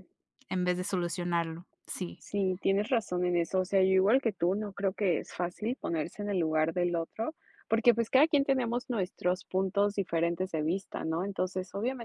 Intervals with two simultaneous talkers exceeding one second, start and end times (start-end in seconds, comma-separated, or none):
none